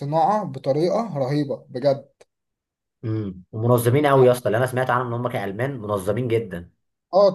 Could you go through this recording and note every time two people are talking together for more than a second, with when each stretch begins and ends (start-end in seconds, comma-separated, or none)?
none